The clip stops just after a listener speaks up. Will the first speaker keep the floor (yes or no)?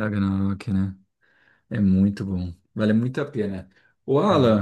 yes